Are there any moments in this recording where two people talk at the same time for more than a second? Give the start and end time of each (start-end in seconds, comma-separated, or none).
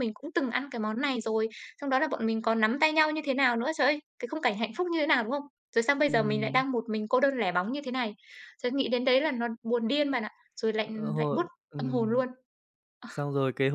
10.8-12.2